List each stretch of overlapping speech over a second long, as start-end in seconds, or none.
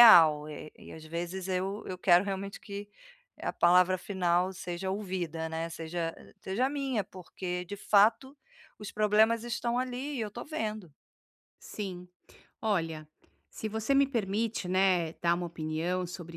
none